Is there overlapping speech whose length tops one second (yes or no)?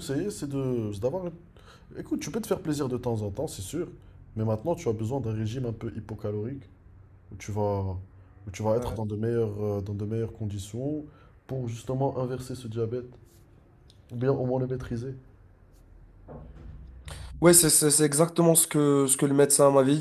no